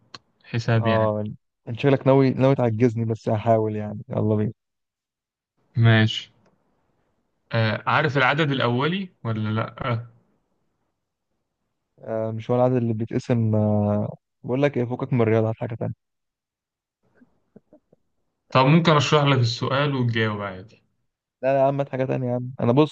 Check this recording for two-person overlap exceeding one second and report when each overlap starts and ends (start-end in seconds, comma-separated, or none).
none